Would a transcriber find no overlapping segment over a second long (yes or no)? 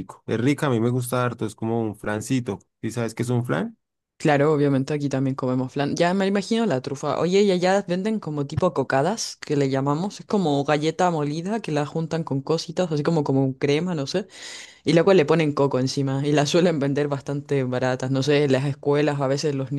yes